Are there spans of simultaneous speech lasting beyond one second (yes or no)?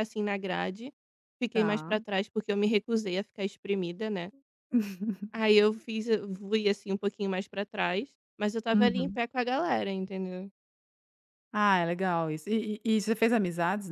no